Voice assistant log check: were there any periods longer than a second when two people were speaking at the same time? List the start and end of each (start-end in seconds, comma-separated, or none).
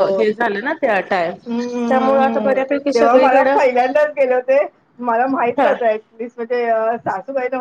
1.9-3.6